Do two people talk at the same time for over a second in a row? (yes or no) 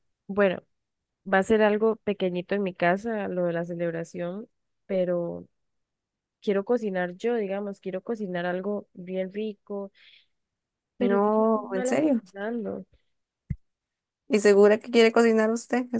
yes